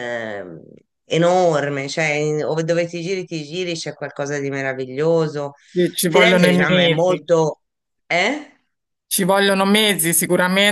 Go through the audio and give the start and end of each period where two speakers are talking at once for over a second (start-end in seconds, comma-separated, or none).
6.1-7.3